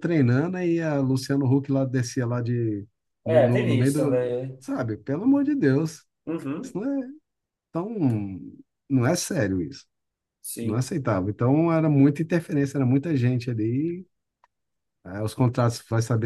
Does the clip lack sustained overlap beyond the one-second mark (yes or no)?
no